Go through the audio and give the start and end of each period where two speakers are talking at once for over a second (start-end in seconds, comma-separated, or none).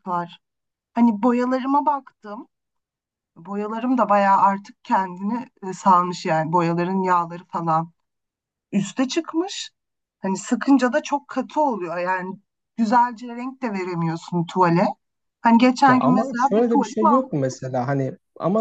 15.9-17.8